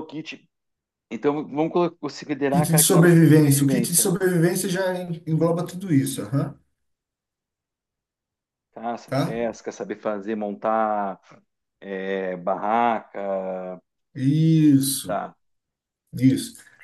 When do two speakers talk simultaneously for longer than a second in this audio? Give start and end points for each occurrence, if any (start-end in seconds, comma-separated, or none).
2.5-4.1